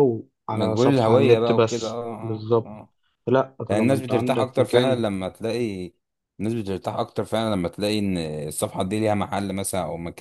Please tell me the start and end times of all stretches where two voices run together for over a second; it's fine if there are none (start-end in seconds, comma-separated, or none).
0.5-2.7, 3.7-5.0